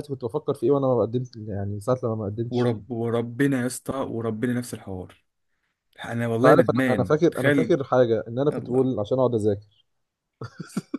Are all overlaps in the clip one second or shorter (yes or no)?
no